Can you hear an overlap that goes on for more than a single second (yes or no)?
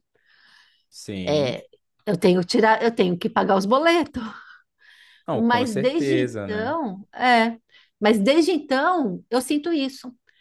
yes